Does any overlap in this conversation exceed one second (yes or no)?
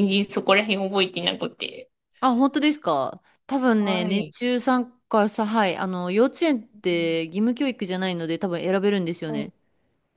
no